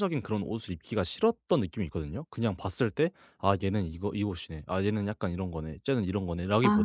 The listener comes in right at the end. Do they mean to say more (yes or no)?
no